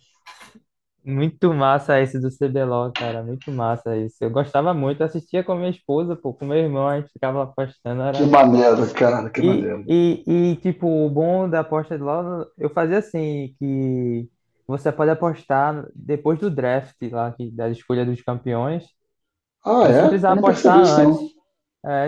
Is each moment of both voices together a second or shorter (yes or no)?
no